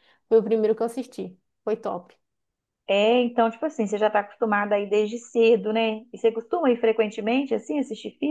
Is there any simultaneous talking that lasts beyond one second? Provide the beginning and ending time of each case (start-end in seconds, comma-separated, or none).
none